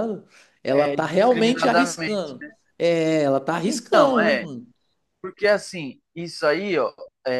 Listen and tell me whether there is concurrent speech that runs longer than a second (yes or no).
yes